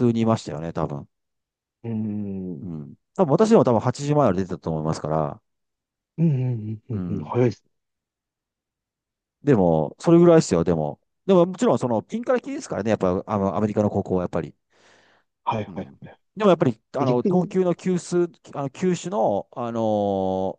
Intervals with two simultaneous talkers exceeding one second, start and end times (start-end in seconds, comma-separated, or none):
none